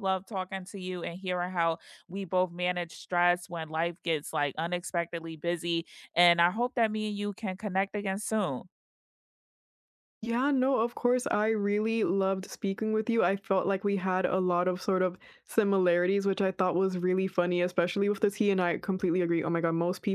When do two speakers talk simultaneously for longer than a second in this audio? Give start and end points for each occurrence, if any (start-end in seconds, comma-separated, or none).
none